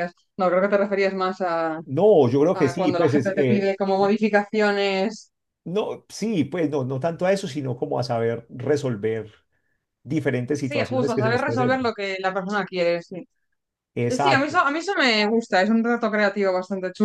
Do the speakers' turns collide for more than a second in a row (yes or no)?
yes